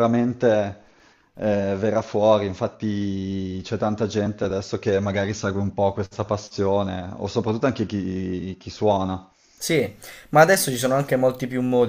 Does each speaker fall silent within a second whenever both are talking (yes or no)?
yes